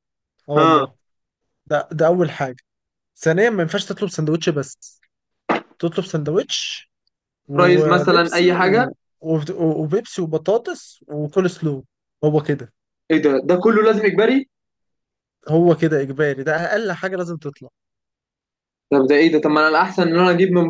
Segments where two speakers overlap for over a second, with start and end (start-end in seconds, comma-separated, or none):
7.5-8.9